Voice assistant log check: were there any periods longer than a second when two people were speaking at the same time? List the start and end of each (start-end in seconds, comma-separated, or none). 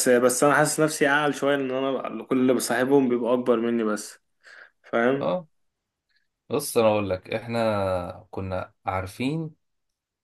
none